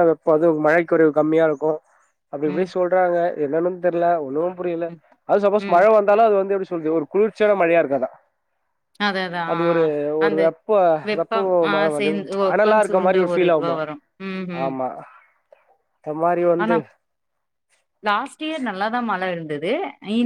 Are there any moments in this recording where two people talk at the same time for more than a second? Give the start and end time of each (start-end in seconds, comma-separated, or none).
11.2-13.8